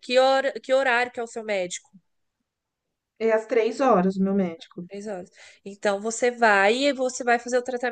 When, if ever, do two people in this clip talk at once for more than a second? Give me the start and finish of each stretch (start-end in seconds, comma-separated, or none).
none